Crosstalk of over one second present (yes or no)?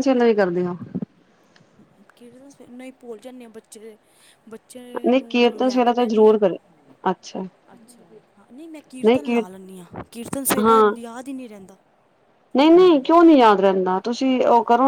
yes